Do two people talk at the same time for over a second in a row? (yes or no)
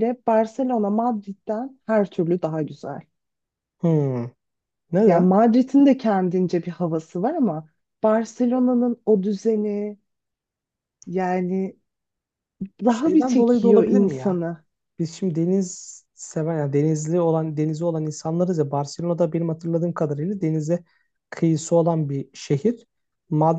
yes